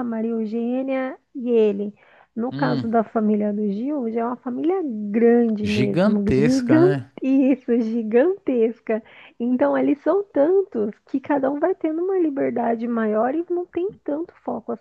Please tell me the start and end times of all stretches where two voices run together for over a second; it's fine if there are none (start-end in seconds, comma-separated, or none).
5.6-7.1